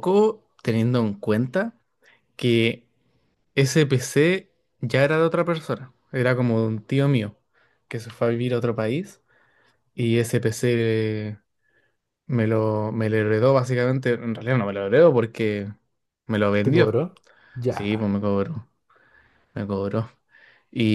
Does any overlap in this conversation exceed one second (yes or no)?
no